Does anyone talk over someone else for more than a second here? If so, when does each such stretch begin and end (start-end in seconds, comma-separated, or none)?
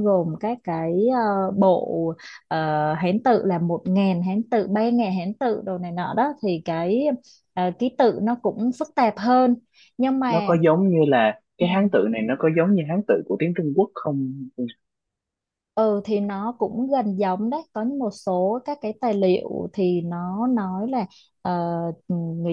none